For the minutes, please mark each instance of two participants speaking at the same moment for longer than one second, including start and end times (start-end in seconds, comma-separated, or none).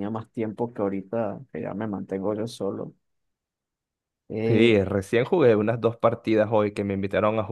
none